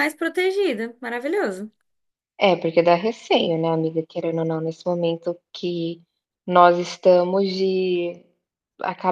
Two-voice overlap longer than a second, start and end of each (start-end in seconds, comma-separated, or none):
none